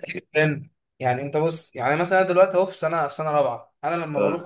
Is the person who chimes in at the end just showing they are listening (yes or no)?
yes